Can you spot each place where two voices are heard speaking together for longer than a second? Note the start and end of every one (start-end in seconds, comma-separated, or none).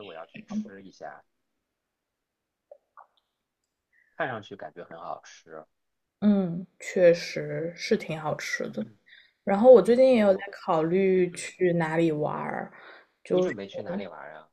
none